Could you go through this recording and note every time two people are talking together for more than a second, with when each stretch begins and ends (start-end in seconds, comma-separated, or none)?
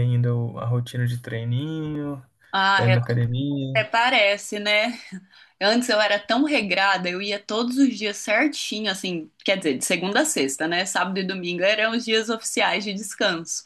none